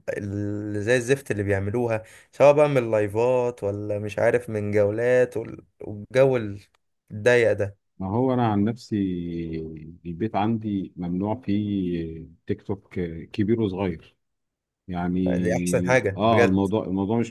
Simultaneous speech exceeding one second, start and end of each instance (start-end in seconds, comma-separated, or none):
15.4-16.7